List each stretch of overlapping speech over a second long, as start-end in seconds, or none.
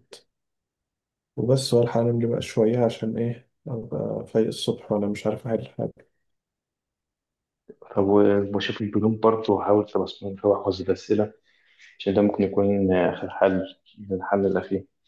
none